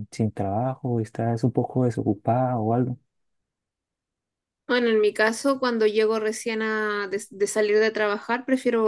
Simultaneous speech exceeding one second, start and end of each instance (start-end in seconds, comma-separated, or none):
none